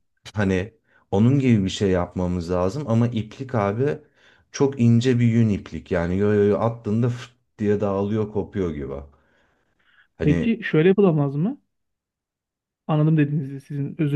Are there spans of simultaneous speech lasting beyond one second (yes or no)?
no